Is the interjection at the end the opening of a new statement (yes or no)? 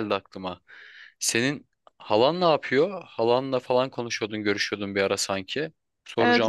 yes